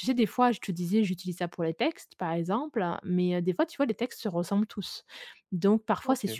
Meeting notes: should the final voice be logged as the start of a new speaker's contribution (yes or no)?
no